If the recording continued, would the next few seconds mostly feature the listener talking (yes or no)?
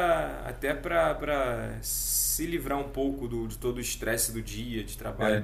no